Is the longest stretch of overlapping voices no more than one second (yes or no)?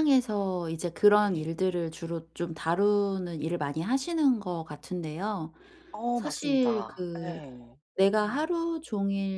no